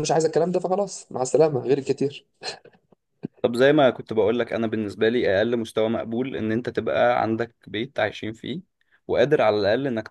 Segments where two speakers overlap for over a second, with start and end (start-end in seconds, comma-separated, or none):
none